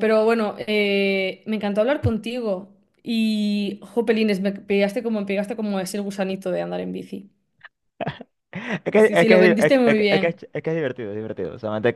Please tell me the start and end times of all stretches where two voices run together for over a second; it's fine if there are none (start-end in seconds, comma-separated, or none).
8.9-10.4